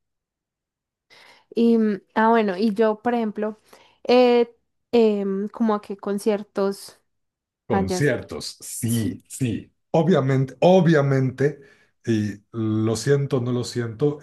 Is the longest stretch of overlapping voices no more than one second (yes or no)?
yes